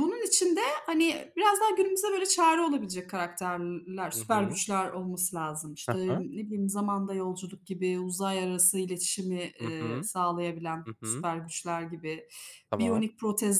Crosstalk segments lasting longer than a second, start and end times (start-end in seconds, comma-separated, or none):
none